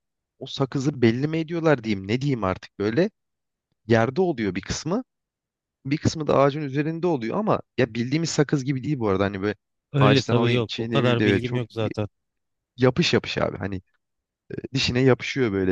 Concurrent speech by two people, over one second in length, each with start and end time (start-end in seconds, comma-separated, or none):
10.0-11.6